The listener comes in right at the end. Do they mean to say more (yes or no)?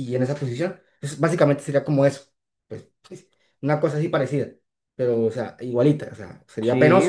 yes